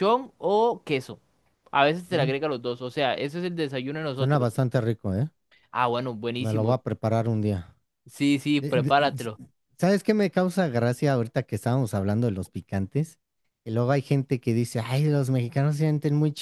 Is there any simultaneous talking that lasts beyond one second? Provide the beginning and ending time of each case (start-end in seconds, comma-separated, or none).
none